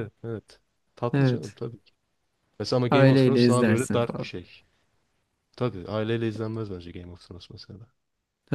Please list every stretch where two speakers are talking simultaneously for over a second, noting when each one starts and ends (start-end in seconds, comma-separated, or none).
2.9-4.3